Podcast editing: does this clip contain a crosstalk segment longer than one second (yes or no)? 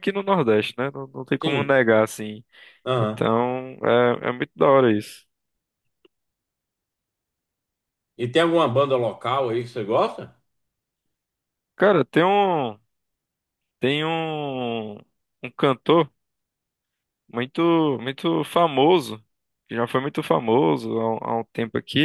no